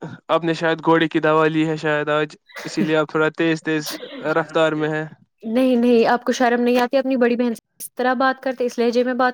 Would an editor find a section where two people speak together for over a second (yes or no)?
no